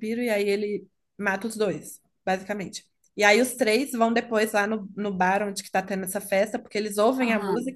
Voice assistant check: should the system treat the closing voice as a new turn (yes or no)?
no